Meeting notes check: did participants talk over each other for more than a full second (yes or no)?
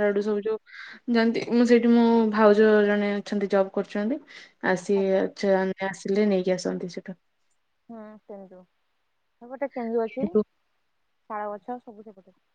no